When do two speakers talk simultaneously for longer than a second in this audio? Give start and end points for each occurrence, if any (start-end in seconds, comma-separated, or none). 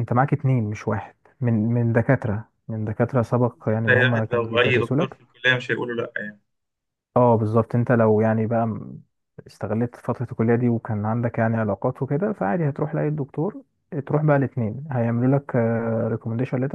3.9-5.2